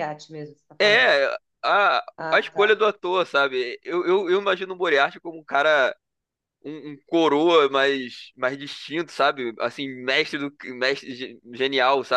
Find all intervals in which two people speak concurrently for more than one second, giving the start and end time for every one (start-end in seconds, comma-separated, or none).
none